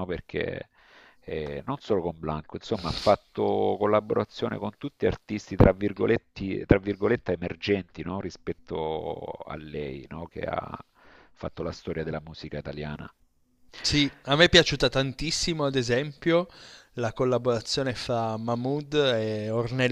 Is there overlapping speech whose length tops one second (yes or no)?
no